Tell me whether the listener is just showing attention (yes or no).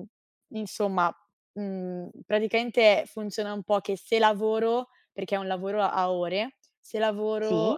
yes